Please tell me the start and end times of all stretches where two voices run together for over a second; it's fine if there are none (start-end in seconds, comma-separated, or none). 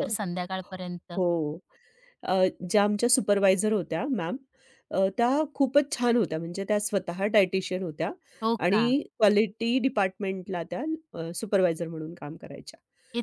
none